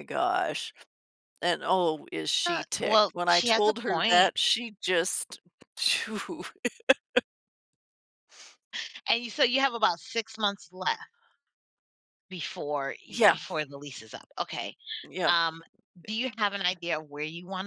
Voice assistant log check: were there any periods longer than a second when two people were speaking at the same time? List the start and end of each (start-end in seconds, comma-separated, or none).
2.4-4.3